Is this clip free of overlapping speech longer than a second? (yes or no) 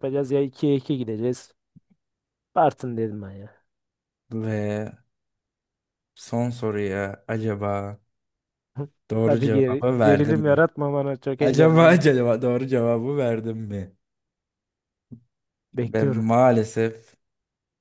no